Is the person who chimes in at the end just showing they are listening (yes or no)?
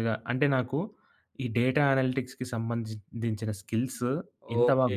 no